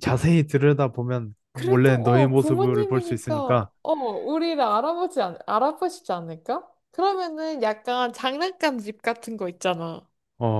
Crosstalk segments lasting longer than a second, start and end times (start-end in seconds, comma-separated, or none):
1.5-3.7